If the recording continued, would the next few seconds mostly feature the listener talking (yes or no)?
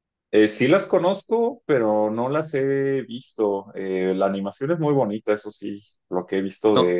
no